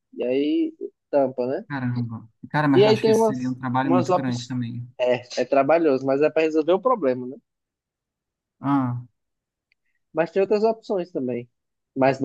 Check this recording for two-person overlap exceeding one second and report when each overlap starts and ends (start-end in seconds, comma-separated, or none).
2.7-4.5